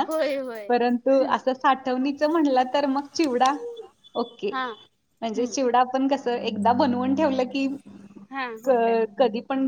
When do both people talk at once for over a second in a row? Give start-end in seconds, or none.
none